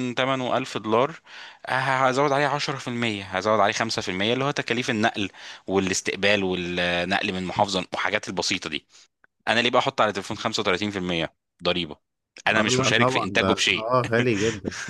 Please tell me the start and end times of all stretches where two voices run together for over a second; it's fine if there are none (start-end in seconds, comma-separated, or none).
12.5-13.9